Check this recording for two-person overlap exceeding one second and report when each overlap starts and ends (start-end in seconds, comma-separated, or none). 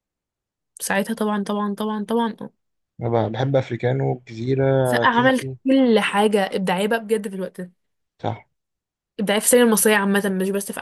none